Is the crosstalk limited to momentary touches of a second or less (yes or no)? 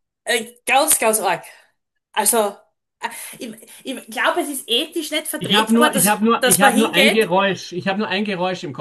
no